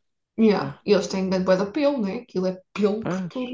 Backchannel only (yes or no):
yes